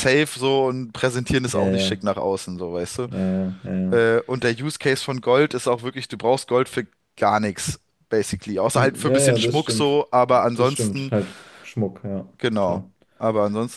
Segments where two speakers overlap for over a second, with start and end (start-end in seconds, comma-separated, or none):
8.7-11.1